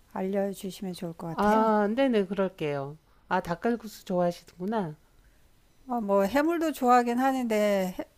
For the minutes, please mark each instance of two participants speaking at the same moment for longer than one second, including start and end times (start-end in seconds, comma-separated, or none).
none